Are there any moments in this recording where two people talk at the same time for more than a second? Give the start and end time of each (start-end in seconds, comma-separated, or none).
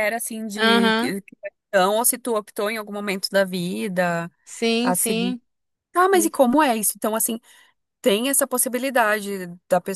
none